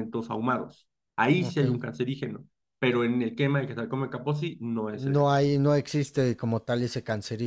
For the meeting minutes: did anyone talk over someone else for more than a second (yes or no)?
no